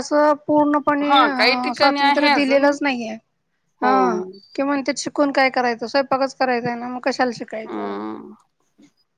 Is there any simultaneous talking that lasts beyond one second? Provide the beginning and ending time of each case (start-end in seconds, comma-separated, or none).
1.1-2.7